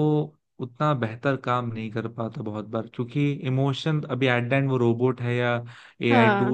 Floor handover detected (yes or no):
no